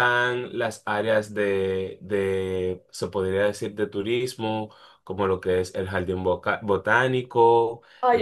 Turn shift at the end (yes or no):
yes